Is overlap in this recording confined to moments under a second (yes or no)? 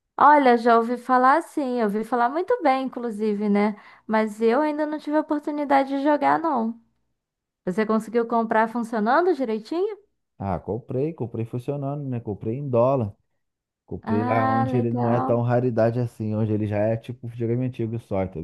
no